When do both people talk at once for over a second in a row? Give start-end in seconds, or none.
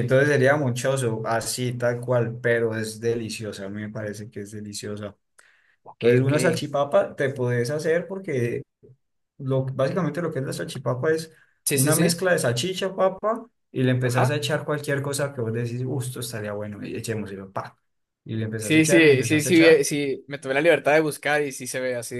18.6-19.9